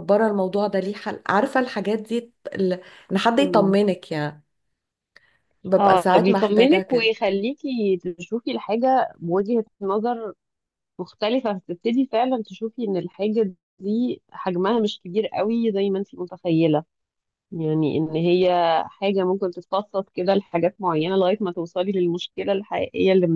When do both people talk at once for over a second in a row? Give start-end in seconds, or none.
5.7-7.1